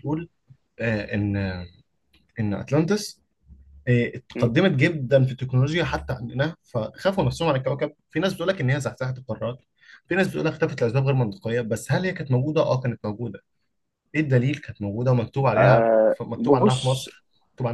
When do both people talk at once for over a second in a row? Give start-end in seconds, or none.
15.6-17.1